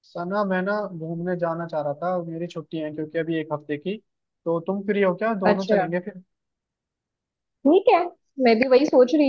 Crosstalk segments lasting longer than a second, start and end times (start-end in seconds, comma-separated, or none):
none